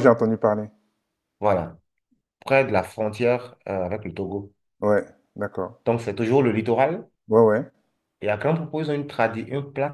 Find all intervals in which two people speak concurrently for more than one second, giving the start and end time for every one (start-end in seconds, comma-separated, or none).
none